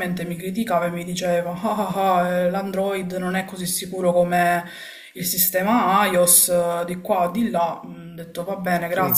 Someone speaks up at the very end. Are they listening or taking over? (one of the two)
taking over